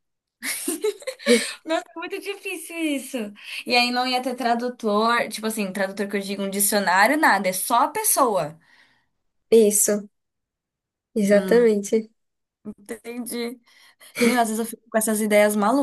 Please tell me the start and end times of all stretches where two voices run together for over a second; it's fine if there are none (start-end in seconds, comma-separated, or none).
none